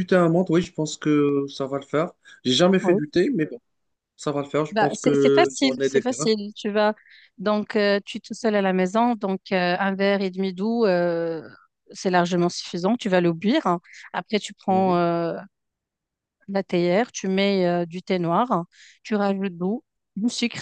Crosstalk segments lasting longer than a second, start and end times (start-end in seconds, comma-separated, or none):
4.7-6.3